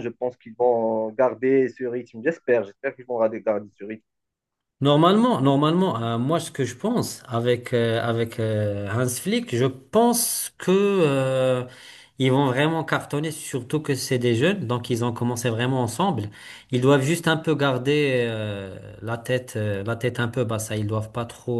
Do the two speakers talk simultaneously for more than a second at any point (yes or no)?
no